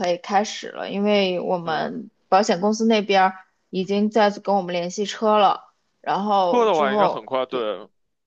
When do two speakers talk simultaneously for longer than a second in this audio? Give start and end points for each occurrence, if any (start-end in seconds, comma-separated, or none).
6.5-7.7